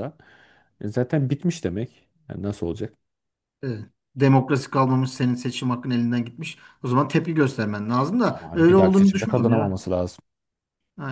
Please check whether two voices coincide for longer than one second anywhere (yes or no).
yes